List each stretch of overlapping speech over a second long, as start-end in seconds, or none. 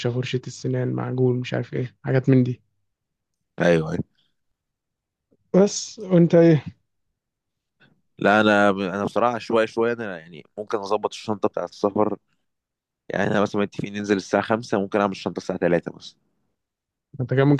none